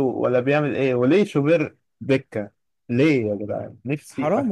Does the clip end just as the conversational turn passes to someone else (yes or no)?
yes